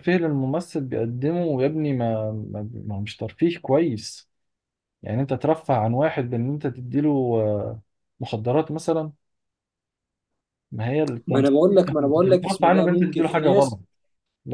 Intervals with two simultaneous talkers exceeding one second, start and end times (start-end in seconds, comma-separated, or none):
11.3-13.8